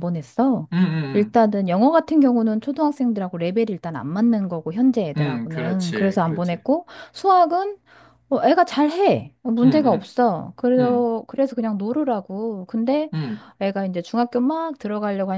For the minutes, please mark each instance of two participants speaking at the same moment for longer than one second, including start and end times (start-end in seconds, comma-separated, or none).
5.2-6.6